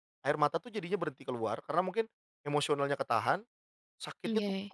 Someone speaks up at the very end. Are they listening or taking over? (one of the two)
listening